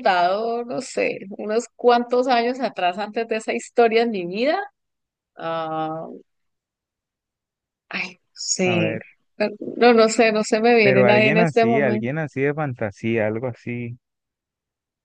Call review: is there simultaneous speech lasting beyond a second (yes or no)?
yes